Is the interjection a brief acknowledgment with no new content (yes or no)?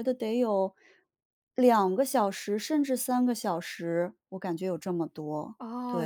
no